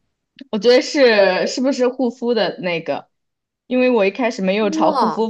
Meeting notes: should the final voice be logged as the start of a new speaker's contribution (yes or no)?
no